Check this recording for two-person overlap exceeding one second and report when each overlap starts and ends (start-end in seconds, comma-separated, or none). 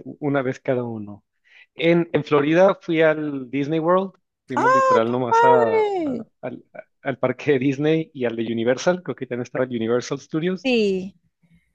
4.5-6.2